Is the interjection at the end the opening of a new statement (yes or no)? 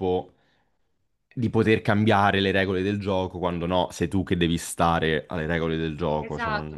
yes